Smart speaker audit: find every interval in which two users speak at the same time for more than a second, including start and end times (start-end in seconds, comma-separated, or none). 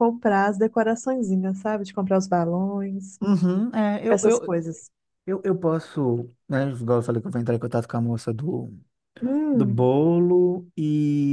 none